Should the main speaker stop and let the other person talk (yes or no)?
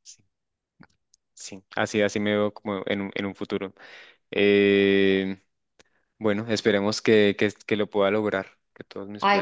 yes